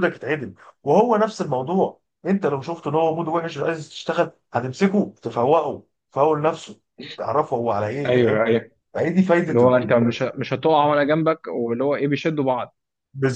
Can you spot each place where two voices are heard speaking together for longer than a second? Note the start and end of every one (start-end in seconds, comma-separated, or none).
none